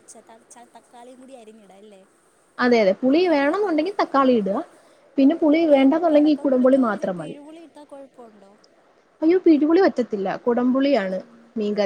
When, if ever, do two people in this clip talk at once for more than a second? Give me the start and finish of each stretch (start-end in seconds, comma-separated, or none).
5.6-7.3